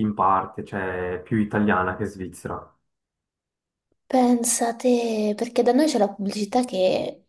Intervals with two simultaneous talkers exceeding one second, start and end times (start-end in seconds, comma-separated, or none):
none